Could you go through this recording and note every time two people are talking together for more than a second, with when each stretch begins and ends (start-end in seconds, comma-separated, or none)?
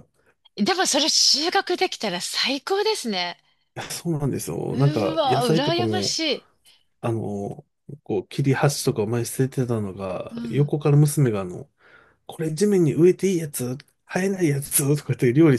4.7-6.2